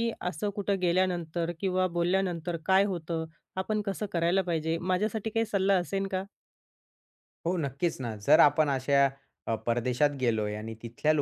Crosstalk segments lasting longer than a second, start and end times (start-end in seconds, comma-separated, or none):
none